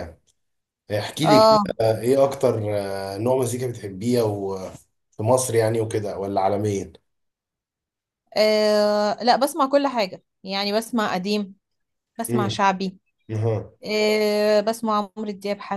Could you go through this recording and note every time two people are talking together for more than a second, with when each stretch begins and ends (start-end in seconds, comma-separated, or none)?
none